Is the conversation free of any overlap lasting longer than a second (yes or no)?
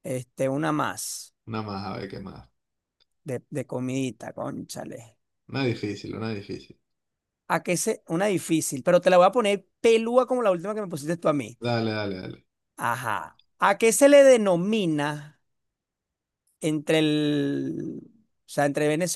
yes